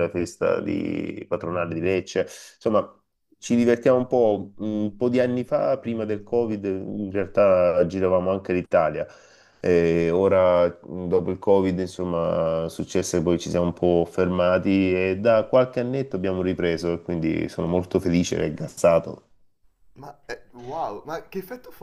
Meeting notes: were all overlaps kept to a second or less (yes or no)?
yes